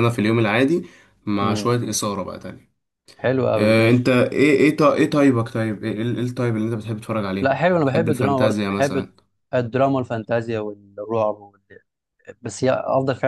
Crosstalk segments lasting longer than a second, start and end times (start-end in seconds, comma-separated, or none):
7.4-9.1